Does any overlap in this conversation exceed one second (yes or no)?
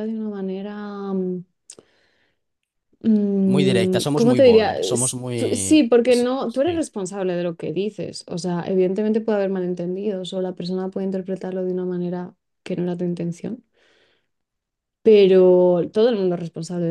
yes